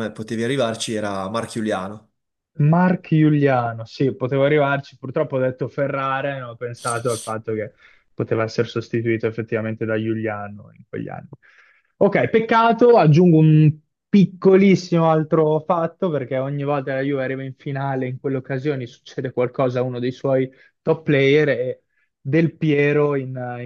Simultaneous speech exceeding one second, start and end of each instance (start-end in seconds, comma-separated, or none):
none